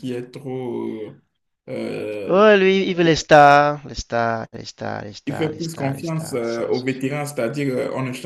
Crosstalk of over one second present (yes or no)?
yes